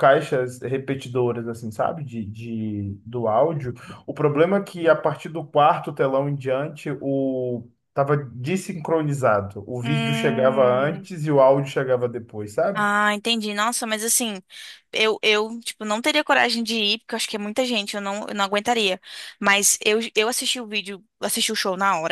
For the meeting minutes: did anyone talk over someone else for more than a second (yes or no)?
yes